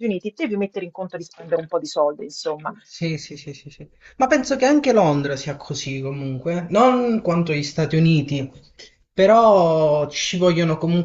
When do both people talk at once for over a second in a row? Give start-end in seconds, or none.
none